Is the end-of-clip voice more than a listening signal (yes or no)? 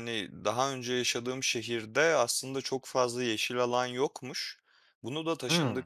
no